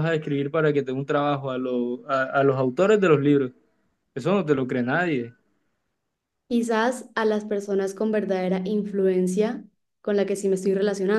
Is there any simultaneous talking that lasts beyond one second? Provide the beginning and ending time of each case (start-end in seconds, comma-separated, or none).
none